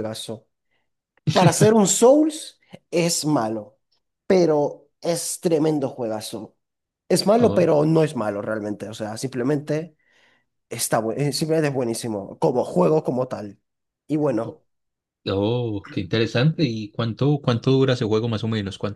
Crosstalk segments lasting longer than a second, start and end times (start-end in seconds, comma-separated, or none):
none